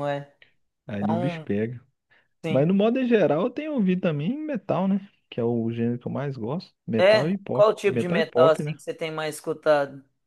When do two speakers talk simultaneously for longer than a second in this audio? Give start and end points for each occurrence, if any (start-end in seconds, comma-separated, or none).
7.0-8.8